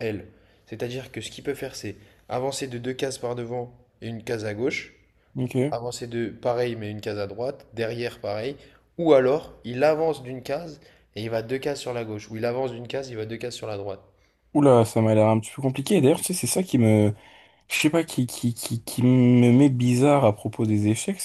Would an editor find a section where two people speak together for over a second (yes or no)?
no